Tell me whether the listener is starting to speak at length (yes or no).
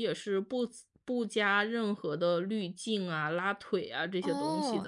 yes